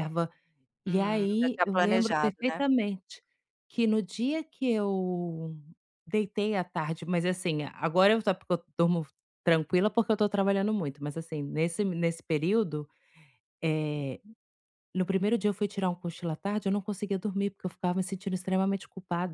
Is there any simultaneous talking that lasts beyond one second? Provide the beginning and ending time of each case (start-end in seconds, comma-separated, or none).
0.8-2.6